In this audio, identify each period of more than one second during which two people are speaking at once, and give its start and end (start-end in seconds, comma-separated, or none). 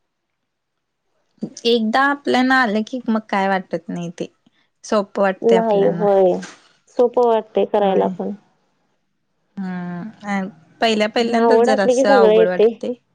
11.4-12.6